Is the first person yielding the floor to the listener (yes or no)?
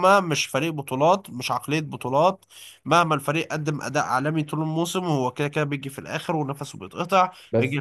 no